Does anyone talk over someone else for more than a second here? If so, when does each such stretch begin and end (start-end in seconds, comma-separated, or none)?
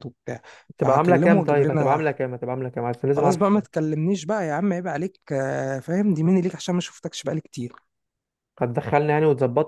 0.8-2.0